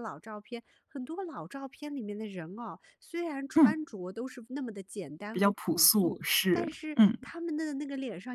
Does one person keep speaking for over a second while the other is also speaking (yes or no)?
yes